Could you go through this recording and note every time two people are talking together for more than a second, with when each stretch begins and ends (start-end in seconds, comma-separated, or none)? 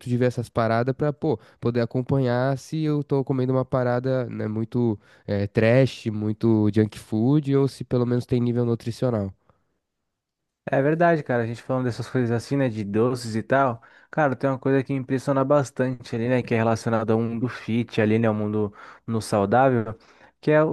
none